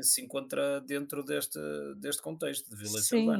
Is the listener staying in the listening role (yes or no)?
no